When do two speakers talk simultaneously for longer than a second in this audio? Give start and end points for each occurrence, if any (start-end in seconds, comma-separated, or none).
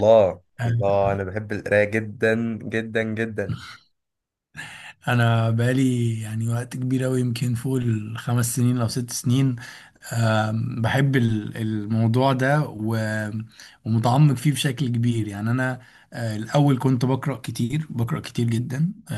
none